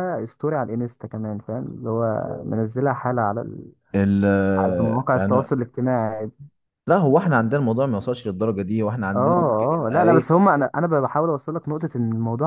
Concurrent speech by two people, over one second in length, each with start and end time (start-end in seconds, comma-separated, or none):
none